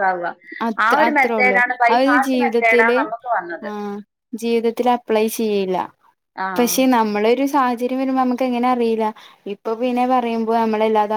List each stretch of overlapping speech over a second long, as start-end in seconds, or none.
0.8-3.0